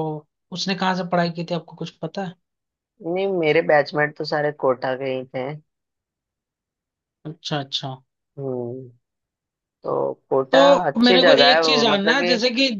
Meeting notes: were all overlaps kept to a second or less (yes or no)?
no